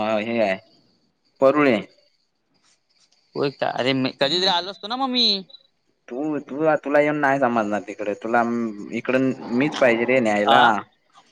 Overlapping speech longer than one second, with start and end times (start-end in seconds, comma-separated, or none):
none